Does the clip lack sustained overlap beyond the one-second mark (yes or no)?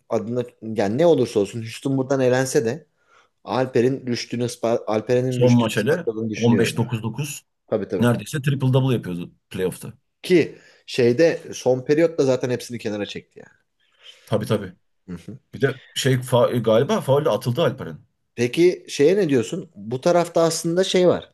no